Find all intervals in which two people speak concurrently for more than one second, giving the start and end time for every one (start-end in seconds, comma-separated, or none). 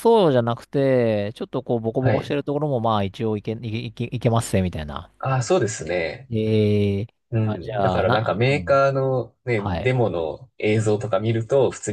7.4-8.8